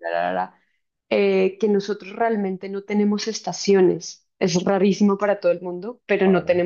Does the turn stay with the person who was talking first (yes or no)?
yes